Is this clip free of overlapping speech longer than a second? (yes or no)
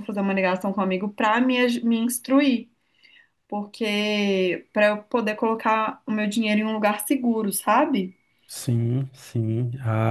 yes